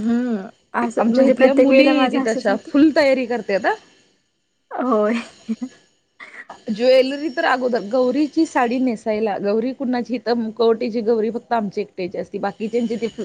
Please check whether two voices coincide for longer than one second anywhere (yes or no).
yes